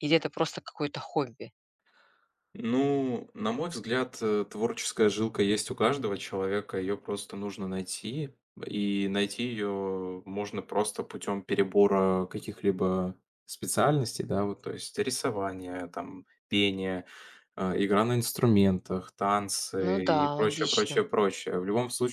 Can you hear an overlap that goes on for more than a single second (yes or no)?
yes